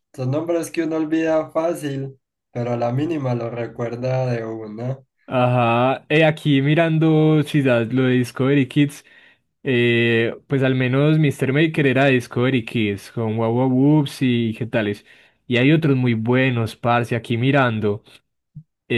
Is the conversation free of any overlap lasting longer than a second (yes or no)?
yes